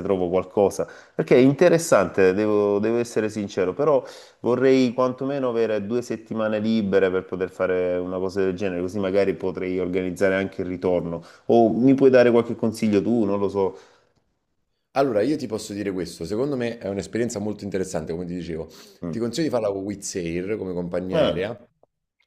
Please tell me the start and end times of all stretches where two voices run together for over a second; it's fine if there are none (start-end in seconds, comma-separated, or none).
none